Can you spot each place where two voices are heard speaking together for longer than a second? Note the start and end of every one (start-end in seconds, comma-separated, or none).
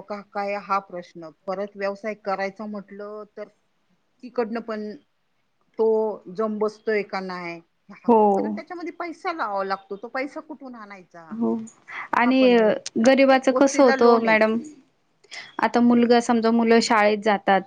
13.1-14.3